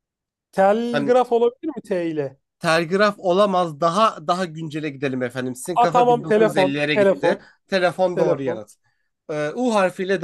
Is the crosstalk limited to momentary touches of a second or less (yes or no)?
no